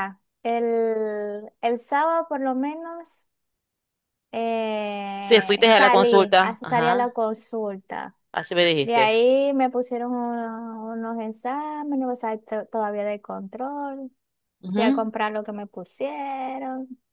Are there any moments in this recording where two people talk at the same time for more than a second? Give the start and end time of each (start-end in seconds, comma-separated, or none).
5.2-7.1